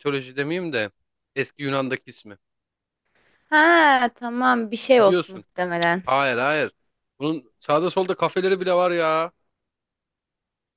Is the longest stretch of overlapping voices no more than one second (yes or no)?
yes